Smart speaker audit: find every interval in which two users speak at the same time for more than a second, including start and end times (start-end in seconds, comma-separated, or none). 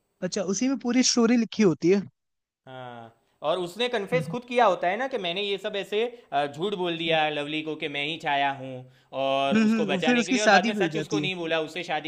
9.5-11.3